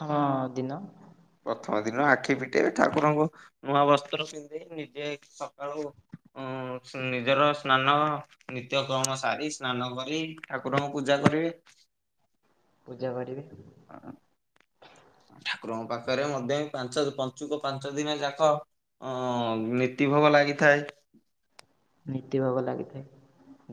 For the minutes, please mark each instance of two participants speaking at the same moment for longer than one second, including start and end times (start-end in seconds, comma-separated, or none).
none